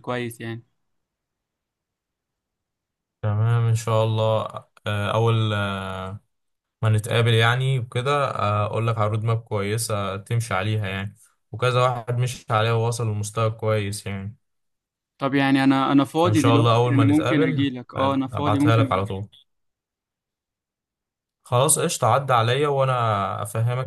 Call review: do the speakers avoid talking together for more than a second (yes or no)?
no